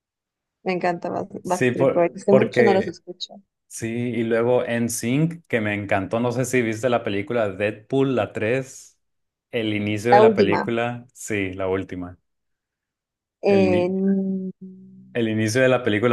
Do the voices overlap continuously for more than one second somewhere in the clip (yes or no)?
yes